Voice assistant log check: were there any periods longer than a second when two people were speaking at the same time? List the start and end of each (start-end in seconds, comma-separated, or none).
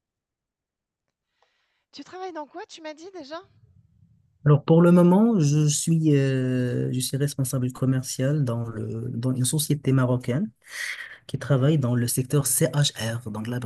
none